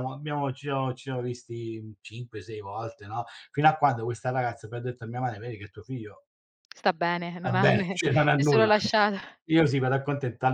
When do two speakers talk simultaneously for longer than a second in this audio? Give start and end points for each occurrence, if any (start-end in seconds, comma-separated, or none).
7.4-8.7